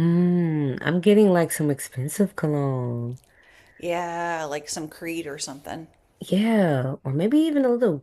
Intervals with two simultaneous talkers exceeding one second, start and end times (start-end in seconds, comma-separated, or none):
none